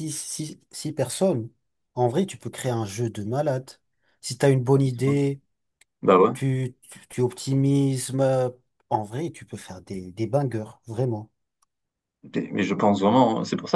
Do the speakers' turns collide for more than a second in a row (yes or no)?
no